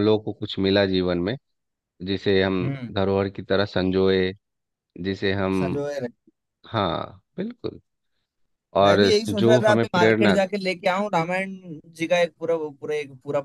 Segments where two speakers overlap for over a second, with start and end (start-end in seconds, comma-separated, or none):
8.8-10.4